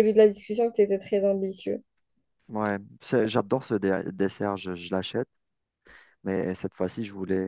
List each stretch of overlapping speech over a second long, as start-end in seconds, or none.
none